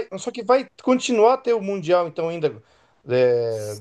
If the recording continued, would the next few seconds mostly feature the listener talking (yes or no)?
no